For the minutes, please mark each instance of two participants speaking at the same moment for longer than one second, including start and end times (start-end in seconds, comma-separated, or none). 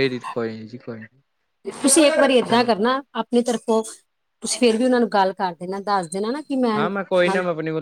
none